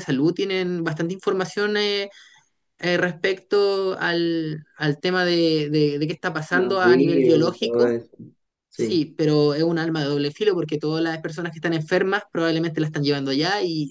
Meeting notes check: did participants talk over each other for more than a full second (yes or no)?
yes